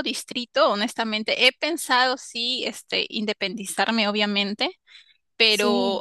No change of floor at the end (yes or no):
yes